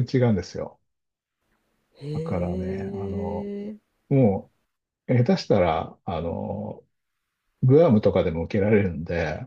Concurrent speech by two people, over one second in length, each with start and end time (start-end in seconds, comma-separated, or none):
2.1-3.5